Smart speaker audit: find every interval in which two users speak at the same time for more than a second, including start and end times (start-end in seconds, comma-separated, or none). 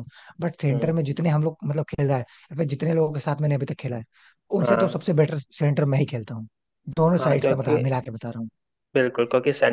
none